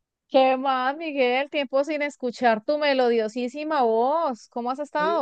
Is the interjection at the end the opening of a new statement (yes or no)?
yes